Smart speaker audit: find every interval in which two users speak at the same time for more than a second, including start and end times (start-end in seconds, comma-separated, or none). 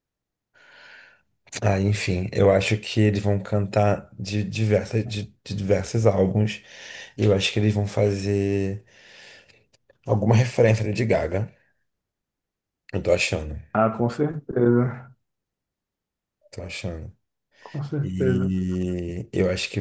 none